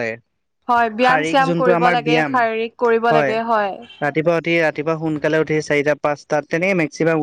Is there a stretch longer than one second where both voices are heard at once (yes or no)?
yes